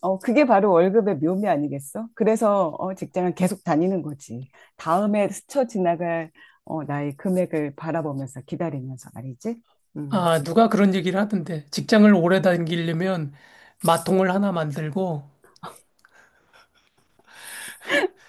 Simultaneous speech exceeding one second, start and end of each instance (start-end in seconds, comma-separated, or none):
none